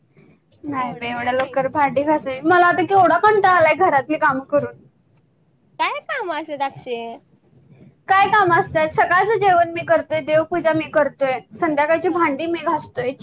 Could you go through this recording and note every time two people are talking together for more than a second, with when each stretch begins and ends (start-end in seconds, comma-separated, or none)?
0.8-2.4